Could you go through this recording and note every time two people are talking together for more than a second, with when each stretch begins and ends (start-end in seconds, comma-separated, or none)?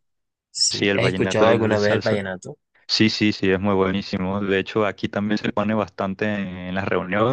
0.7-2.2